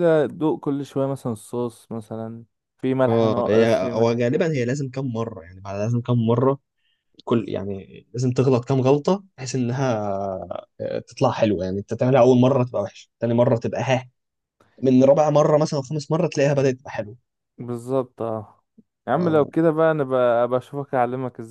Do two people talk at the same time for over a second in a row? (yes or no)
yes